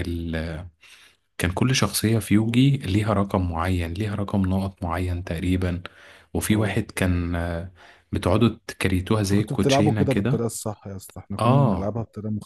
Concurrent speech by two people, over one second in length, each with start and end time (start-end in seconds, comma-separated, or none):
9.2-10.4